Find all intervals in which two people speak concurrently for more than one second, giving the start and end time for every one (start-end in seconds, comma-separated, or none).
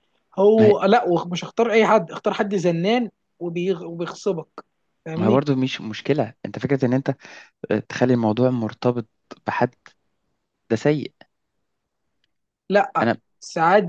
none